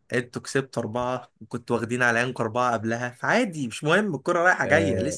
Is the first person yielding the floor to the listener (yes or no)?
yes